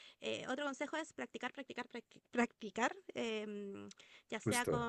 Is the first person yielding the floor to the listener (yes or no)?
no